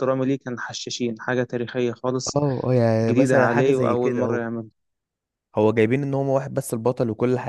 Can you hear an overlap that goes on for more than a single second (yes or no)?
yes